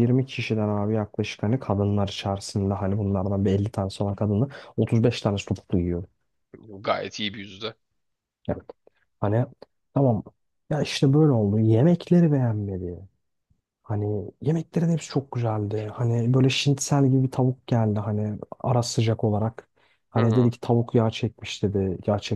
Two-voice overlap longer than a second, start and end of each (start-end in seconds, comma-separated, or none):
none